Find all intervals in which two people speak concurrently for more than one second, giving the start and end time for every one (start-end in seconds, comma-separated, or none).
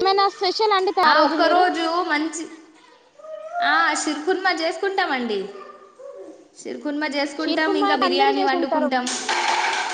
7.4-8.9